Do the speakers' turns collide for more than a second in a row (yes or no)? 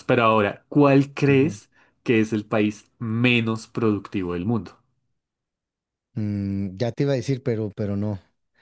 no